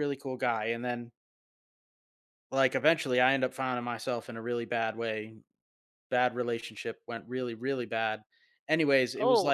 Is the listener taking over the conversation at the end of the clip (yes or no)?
no